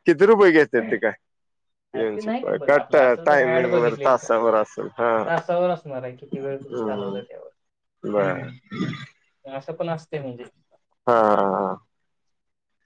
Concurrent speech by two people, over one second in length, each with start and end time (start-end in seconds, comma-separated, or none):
2.0-4.3